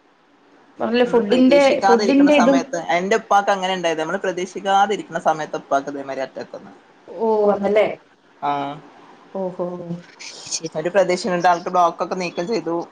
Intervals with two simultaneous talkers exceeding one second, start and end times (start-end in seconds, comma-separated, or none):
1.1-2.6